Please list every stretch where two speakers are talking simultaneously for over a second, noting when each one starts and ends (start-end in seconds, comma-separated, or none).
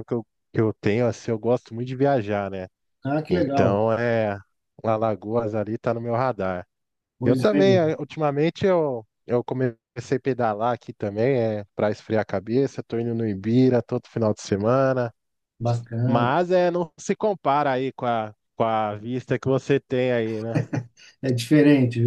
none